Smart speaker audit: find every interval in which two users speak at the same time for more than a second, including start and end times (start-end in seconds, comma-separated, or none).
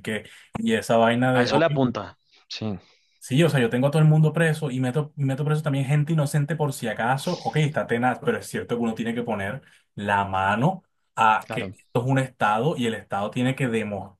none